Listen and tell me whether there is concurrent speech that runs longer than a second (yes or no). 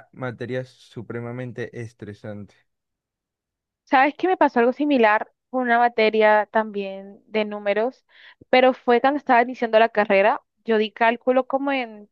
no